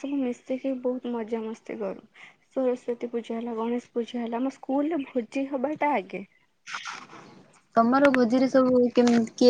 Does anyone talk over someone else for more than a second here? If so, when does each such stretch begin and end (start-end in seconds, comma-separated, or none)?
none